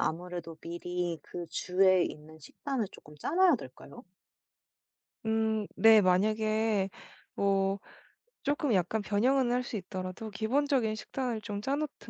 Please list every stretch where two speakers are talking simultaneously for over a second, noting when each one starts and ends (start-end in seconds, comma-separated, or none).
none